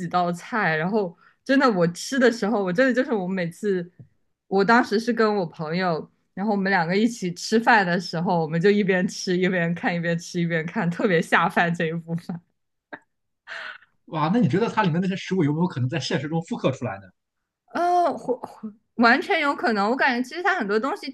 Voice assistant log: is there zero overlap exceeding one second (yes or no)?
yes